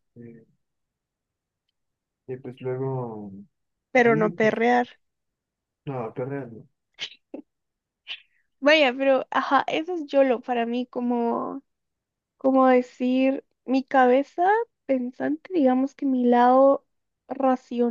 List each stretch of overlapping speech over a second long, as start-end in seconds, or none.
none